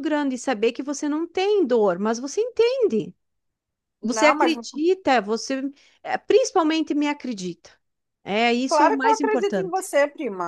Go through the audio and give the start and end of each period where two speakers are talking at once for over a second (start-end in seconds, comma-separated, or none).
8.7-9.9